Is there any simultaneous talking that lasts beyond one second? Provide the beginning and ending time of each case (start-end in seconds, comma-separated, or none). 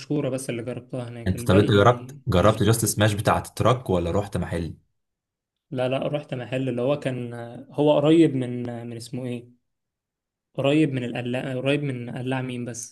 1.3-2.9